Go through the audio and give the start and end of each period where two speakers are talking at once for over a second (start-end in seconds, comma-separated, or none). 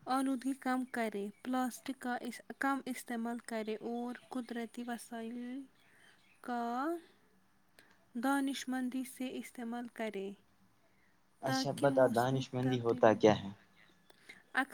11.5-13.2